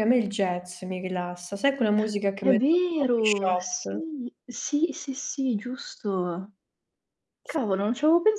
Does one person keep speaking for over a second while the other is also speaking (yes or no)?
yes